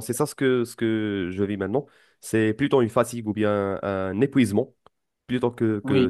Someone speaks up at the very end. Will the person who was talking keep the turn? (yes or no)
yes